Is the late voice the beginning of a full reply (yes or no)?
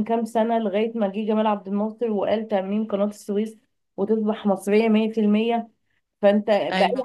no